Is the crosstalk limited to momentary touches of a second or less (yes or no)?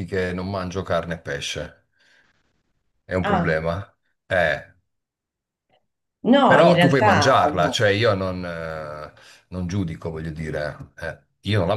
no